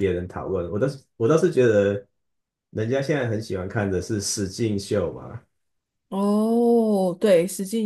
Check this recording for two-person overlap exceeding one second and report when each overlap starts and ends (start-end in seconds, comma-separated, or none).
none